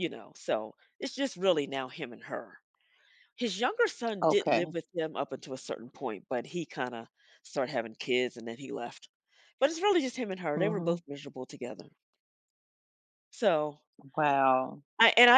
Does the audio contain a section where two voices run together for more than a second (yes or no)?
no